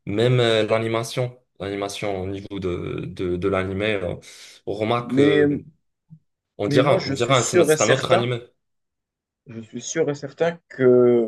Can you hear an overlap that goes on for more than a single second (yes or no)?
yes